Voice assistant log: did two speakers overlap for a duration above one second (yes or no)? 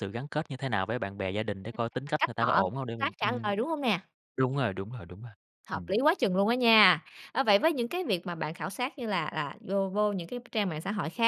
yes